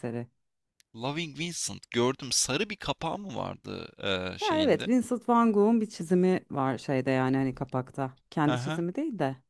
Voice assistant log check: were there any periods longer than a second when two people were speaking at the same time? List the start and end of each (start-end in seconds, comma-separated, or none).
none